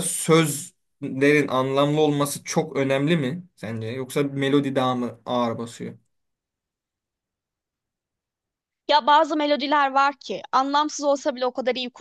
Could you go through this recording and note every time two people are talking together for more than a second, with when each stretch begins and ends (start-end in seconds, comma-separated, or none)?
none